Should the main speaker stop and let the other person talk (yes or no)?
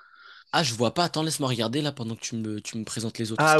yes